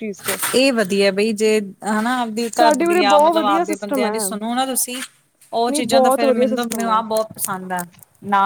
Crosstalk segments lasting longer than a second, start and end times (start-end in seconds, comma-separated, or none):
2.6-4.1, 5.5-7.0